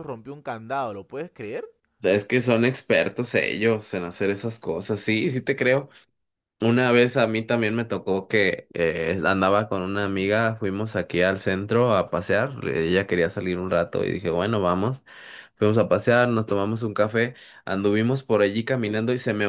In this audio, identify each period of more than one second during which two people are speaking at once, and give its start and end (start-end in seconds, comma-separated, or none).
none